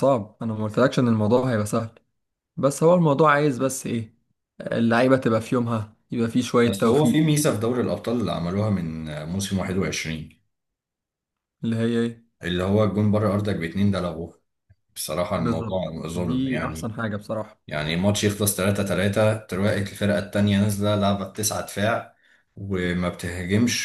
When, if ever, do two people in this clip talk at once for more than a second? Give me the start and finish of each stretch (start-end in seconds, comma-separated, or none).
15.3-16.9